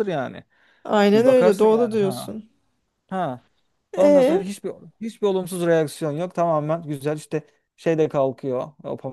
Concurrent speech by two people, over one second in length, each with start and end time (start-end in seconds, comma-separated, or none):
1.1-2.3